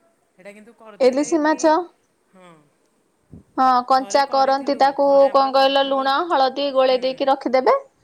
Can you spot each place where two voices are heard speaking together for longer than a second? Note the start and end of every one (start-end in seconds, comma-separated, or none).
4.0-6.0